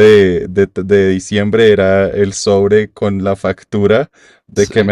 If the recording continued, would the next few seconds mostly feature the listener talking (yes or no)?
no